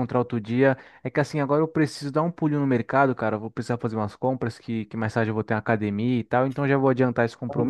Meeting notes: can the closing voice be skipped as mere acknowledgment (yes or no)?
yes